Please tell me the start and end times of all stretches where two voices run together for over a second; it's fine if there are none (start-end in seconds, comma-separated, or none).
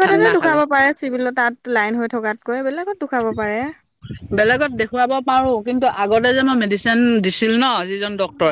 none